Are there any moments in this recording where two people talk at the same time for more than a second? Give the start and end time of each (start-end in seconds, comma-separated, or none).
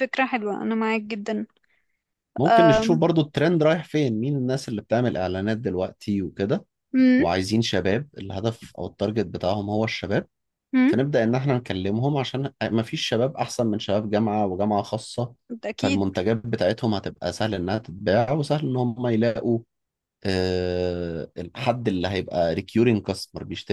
none